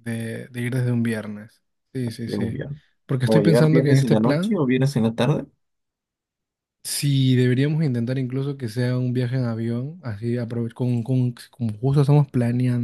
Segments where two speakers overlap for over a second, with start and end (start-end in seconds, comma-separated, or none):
3.2-4.6